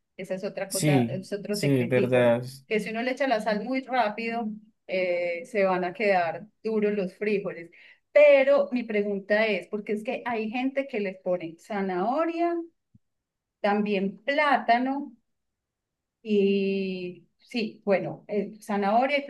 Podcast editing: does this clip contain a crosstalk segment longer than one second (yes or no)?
yes